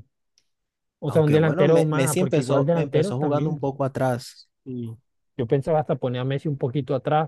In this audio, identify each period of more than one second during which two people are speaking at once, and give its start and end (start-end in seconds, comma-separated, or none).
1.1-3.7